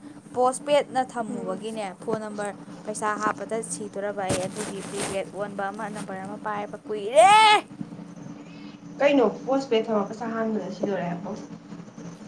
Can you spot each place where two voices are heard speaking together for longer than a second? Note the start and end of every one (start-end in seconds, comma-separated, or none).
none